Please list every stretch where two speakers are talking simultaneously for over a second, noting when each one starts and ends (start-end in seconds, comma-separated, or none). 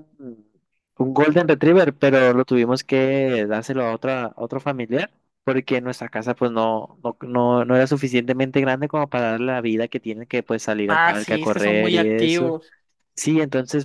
10.9-12.6